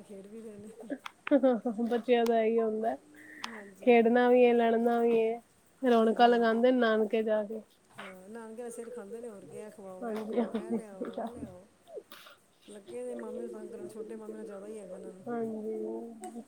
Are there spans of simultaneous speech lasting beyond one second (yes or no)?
yes